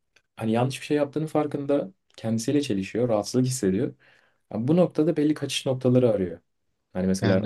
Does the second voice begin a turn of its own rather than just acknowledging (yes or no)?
no